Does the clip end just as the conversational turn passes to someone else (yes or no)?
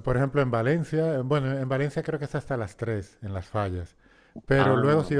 no